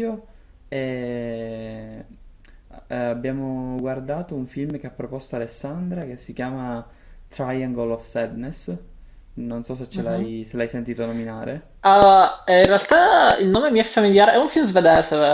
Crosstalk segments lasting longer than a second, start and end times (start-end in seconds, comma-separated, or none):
none